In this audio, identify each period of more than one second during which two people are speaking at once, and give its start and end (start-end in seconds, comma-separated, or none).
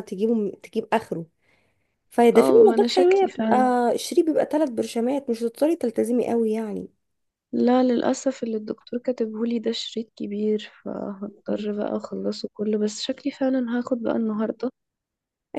2.3-3.6